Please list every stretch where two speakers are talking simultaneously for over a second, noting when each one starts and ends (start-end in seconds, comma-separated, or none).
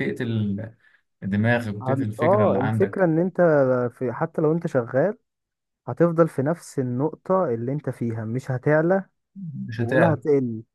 1.8-3.0